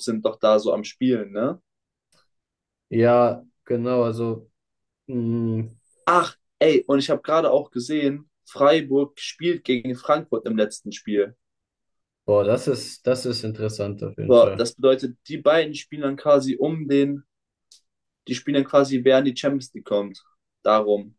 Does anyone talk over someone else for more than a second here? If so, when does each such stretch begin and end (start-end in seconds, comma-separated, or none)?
none